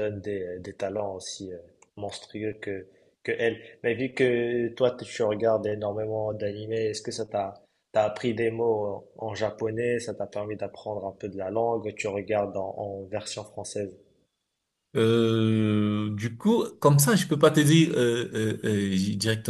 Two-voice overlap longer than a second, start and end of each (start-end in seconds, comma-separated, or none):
none